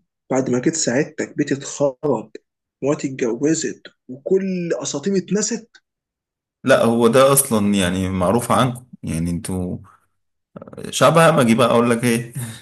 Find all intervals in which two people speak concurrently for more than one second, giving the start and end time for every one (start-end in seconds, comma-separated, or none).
none